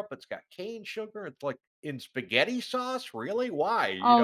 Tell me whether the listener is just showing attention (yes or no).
no